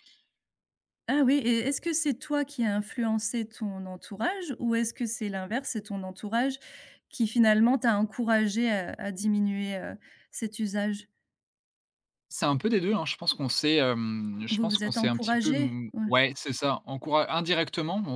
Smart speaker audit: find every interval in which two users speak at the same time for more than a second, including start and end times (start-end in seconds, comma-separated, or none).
14.5-16.1